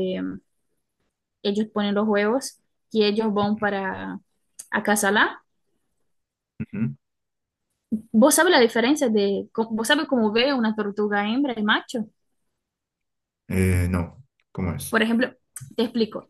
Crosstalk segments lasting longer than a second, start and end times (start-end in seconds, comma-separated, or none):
none